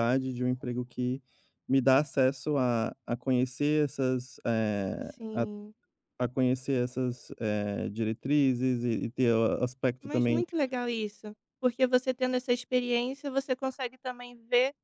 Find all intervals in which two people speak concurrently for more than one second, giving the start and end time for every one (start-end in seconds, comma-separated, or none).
none